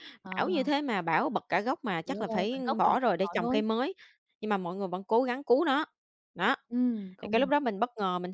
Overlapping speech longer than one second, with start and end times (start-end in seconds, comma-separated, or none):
2.0-3.6